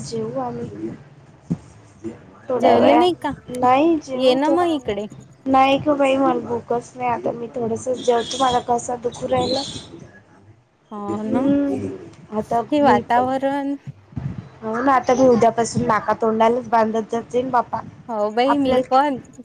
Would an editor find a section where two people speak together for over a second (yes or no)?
no